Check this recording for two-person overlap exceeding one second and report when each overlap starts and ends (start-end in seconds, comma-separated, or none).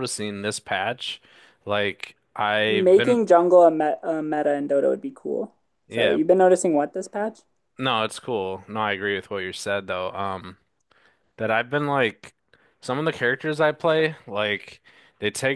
none